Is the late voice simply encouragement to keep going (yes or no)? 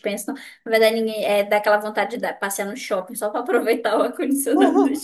no